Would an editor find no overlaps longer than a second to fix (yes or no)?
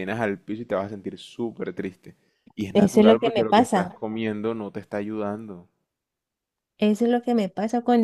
no